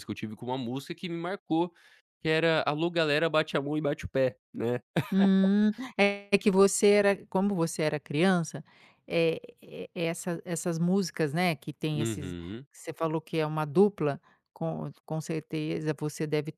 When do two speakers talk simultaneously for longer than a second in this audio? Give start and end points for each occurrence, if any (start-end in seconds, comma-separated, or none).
none